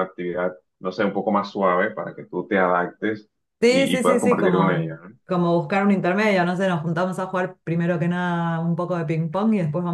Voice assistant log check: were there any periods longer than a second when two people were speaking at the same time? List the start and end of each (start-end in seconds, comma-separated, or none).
3.7-5.2